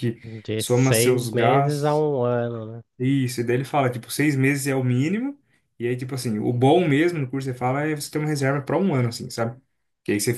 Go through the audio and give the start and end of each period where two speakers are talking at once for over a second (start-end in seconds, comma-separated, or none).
0.6-2.0